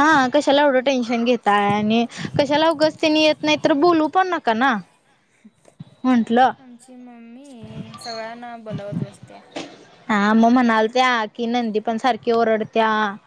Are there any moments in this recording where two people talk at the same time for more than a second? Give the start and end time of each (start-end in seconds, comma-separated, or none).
none